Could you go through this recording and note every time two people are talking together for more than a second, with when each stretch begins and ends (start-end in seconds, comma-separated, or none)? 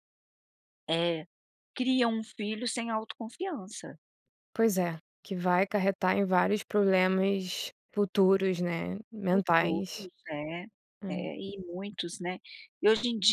none